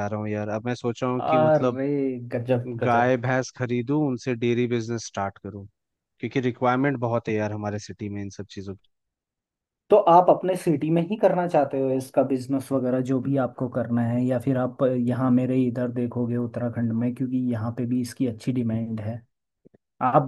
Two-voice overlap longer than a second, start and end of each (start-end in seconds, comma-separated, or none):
none